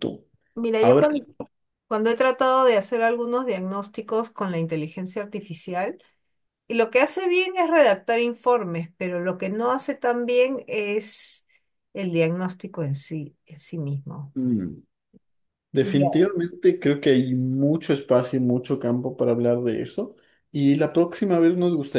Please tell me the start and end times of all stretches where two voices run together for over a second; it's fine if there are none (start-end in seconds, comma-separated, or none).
none